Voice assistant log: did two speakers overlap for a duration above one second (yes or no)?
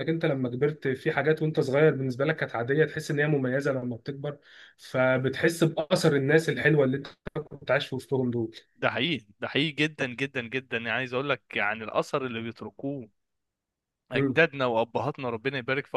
no